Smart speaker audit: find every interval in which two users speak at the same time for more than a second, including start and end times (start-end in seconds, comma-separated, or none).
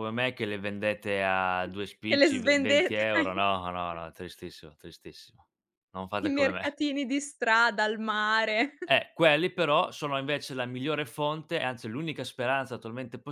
2.1-3.3